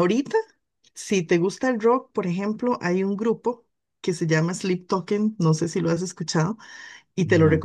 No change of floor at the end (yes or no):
yes